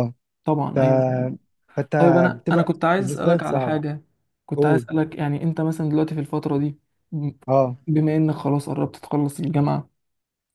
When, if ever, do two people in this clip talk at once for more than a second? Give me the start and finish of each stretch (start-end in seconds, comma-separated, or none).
2.3-3.8